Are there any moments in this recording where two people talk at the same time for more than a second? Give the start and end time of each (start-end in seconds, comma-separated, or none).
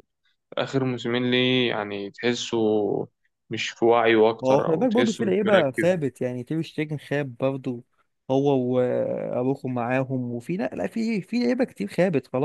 4.4-5.9